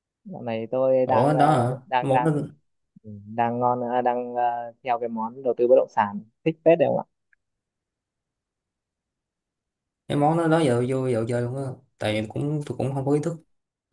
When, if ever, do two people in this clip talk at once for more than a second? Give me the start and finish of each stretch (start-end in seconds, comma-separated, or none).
1.1-2.3